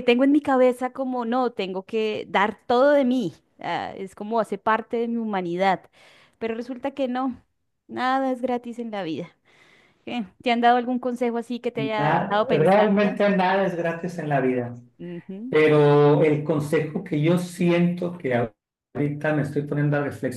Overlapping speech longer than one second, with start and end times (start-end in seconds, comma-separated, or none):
12.0-13.2